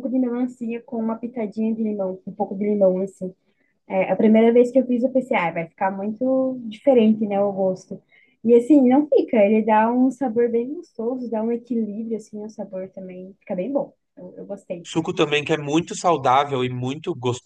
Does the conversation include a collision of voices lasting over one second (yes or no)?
no